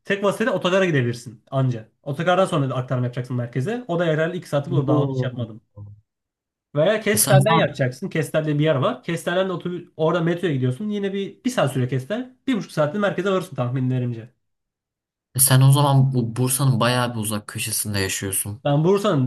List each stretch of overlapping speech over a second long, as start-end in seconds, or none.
none